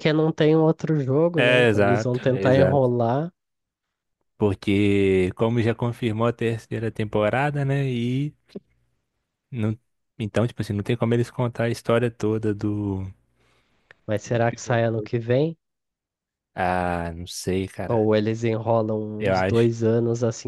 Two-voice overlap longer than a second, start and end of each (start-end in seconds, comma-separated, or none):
1.4-2.9